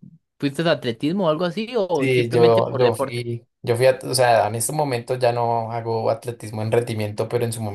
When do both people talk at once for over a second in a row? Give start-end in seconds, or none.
1.9-3.3